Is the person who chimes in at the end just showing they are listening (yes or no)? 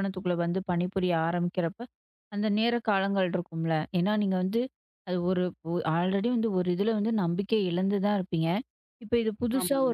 yes